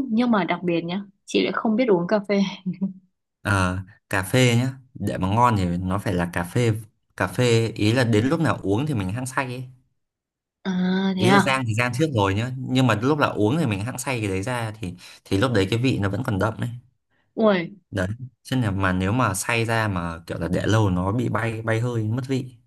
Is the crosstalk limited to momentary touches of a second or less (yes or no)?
yes